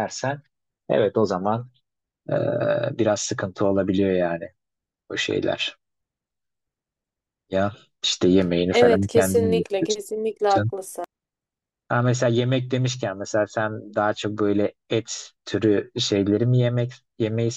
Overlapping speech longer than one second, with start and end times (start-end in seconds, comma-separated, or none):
8.7-10.0